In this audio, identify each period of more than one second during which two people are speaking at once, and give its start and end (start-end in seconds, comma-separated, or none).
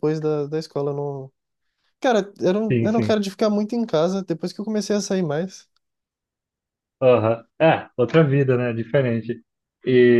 none